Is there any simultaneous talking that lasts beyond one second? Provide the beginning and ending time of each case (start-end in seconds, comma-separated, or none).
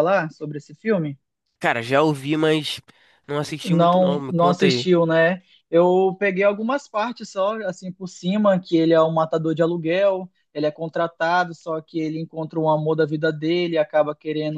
3.6-4.9